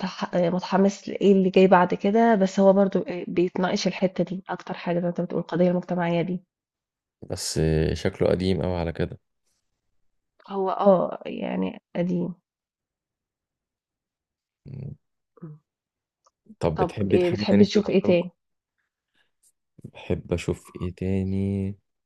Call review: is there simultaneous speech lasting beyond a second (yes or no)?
yes